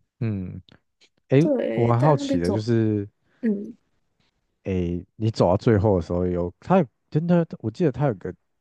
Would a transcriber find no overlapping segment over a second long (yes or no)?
no